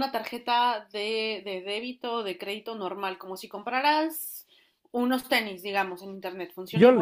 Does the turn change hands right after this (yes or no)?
yes